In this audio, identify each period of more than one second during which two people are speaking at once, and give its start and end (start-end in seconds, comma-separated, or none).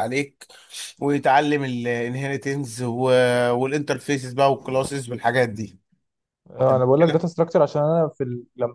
none